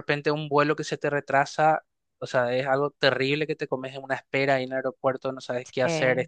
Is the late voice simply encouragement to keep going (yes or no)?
yes